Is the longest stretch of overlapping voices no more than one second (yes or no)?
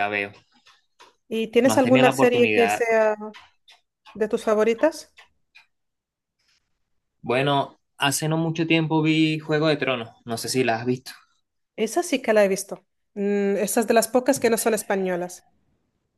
no